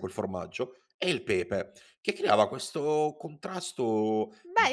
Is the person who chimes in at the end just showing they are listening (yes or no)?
no